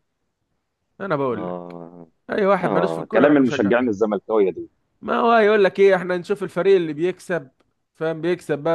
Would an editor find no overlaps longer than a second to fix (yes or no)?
no